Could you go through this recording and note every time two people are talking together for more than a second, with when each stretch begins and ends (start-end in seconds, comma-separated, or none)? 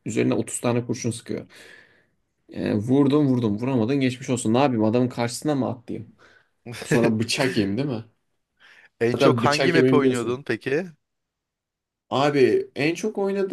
9.1-10.4